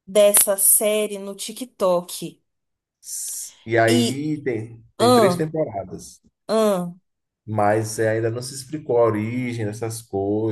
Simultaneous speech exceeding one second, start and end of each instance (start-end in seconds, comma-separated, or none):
none